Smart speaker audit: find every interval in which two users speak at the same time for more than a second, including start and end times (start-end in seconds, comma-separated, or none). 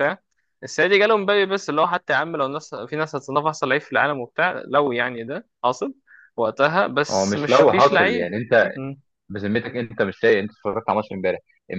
7.1-8.3